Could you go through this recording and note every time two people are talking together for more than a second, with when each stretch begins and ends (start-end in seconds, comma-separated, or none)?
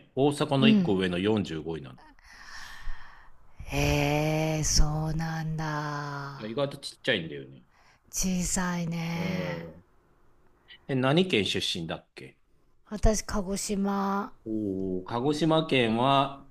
none